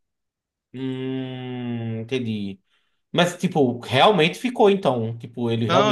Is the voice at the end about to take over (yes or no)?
yes